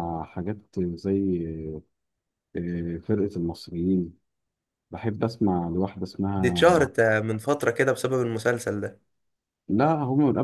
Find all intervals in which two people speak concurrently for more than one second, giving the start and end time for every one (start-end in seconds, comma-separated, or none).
none